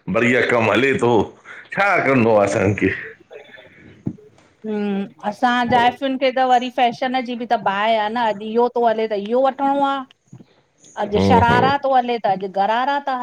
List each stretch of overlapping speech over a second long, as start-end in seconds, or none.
none